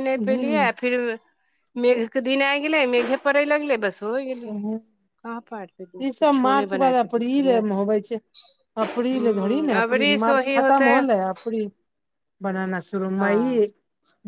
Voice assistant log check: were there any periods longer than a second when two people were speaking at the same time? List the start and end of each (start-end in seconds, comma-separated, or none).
9.1-10.9